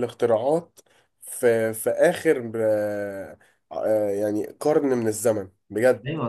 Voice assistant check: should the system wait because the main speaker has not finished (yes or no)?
no